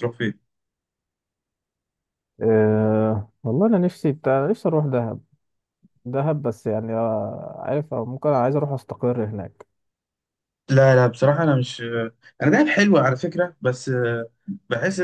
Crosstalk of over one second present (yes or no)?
no